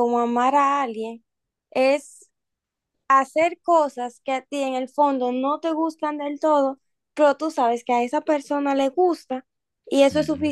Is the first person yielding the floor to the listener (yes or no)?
no